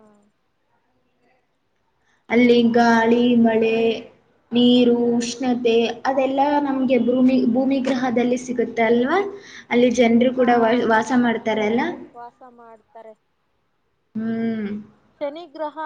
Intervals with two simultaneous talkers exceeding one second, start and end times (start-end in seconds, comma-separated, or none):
none